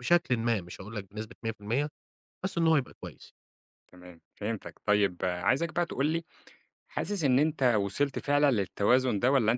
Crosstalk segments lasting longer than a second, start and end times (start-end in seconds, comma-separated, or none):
none